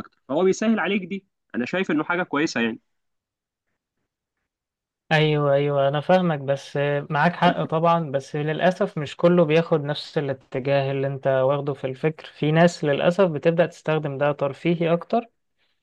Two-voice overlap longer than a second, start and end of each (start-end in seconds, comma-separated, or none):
none